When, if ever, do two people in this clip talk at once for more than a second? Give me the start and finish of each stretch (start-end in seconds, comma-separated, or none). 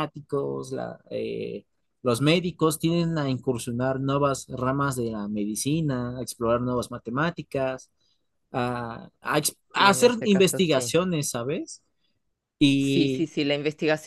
9.7-10.9